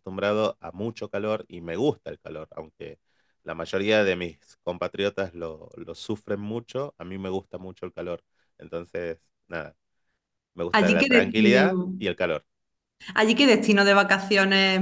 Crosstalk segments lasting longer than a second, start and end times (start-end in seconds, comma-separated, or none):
10.7-11.9